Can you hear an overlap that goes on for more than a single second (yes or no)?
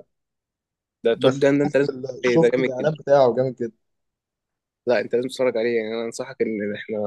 yes